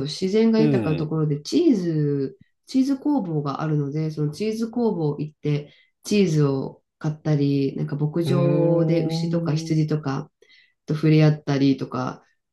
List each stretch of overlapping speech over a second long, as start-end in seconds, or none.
8.2-9.7